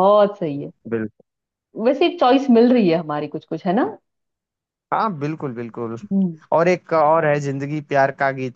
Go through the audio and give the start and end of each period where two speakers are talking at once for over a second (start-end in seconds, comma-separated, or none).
none